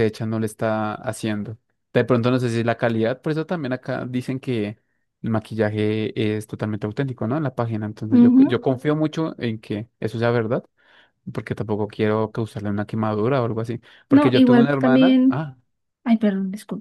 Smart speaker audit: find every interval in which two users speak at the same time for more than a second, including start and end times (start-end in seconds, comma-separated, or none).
14.1-15.4